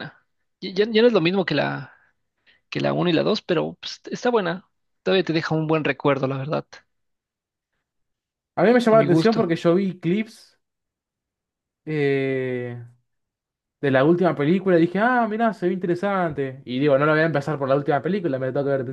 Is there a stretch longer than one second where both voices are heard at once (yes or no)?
no